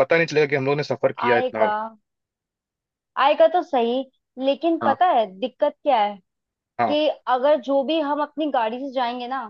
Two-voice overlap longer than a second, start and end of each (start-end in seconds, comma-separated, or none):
none